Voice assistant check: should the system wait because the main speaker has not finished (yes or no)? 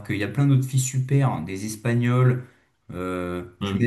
yes